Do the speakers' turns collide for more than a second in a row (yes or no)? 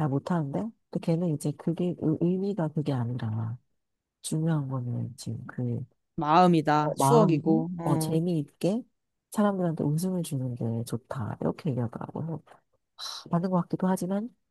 yes